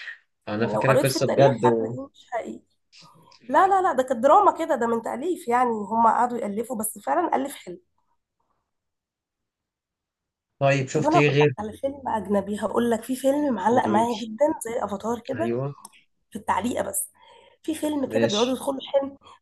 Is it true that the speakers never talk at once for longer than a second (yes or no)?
no